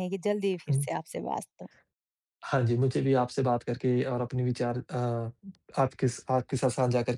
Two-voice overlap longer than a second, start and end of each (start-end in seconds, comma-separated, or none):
none